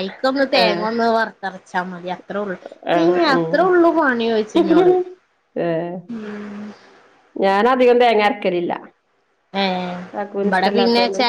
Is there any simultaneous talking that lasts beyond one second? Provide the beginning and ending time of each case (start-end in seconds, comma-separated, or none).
none